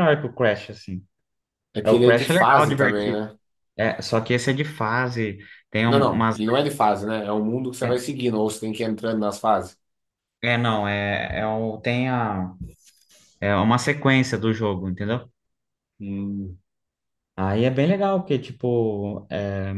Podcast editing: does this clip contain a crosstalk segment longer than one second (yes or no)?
yes